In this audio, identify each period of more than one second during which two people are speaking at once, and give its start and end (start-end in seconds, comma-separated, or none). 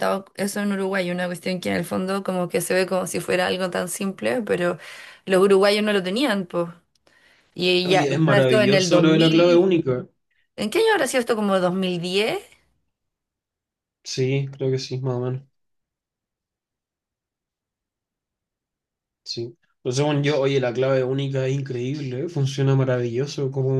7.8-9.7